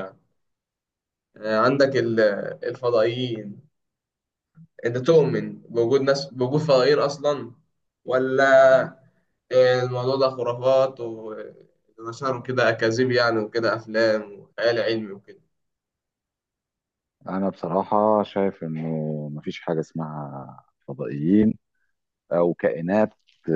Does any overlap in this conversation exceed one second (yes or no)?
no